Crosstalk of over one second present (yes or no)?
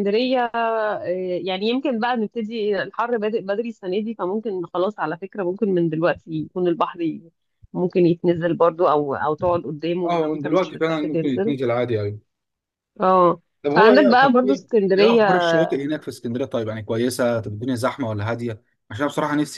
yes